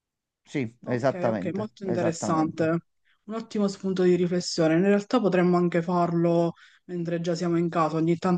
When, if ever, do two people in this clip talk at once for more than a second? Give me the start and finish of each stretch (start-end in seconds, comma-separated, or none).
0.9-2.7